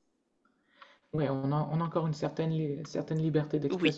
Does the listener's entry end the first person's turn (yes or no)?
no